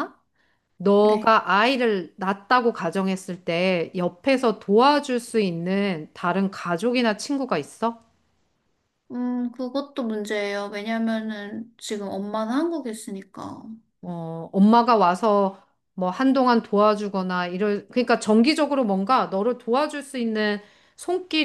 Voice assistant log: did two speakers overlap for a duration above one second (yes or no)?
no